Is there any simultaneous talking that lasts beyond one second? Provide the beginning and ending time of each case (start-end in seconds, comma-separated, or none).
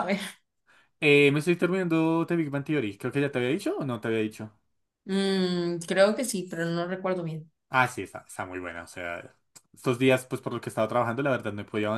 none